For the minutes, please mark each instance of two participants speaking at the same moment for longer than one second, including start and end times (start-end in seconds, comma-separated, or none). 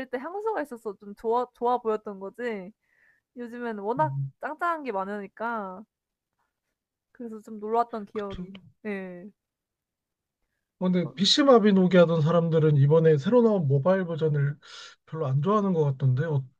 none